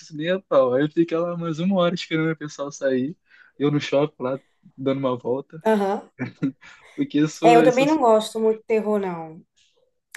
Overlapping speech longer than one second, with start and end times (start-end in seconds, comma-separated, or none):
none